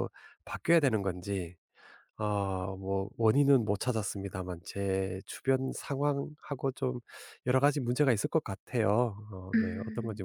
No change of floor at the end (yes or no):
no